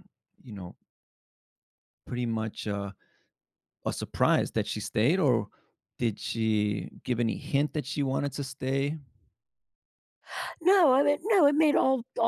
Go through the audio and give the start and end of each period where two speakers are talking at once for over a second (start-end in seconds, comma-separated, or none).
none